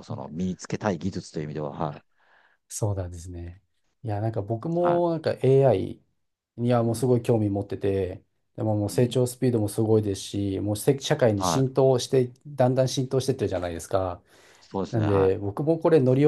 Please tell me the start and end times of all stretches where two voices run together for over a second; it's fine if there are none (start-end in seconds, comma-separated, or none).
none